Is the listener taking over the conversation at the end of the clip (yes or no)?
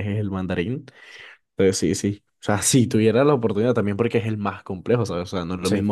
no